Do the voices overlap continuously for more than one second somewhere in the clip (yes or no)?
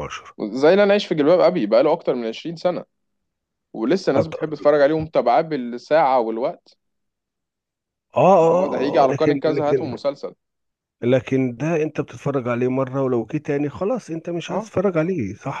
yes